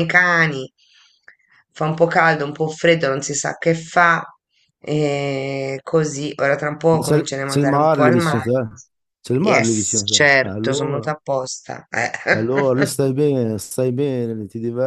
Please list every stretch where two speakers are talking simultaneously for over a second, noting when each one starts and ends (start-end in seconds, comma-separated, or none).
6.9-8.5, 9.4-11.1